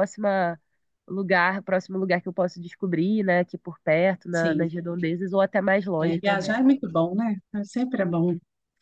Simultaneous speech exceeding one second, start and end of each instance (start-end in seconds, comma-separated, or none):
none